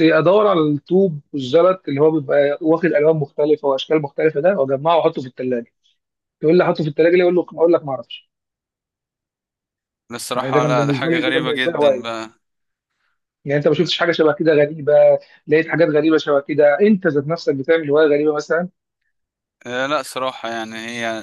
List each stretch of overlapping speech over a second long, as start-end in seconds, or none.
10.3-12.1